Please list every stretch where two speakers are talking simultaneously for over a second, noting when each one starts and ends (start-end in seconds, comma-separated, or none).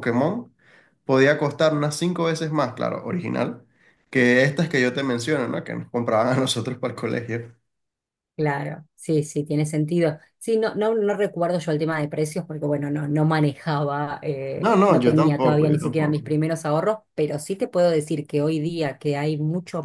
14.6-16.2